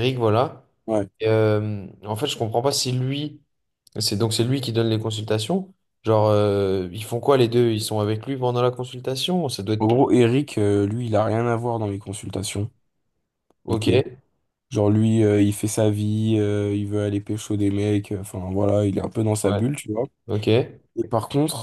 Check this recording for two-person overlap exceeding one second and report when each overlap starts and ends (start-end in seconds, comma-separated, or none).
none